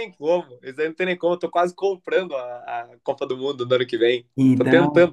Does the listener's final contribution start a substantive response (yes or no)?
no